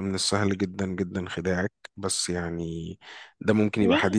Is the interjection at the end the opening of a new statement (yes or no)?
no